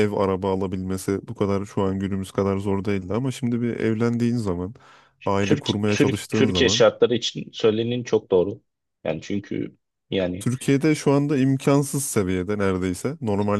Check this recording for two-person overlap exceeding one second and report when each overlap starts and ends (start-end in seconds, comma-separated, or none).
5.4-6.8